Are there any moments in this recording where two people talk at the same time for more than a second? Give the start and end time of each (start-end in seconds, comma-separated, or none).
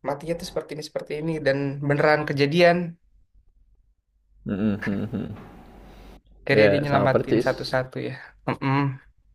6.5-7.8